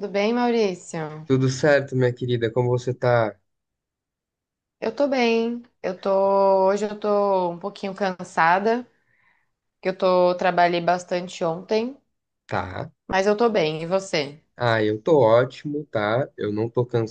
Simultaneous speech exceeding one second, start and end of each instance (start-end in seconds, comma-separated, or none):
none